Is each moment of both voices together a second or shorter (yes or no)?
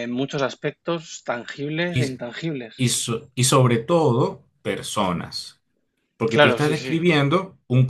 yes